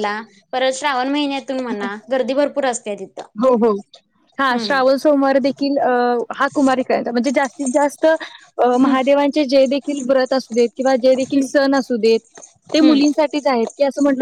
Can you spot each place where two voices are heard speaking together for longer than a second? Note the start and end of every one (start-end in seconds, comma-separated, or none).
none